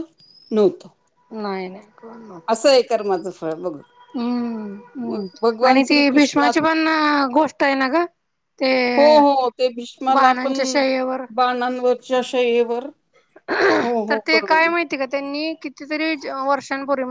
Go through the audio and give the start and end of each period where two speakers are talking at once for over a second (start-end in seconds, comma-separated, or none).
5.1-6.6